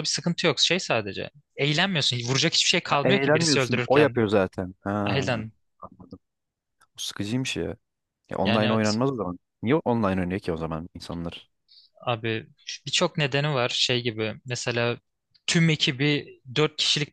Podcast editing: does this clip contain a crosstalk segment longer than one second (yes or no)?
yes